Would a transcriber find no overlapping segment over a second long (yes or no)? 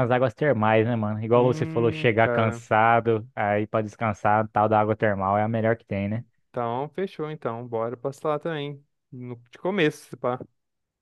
no